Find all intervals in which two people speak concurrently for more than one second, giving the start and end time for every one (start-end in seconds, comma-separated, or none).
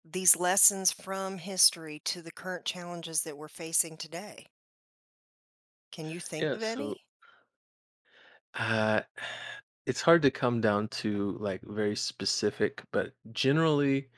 none